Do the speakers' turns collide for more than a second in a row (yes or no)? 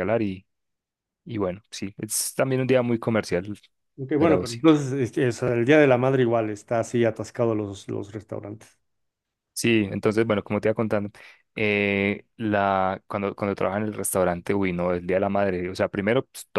no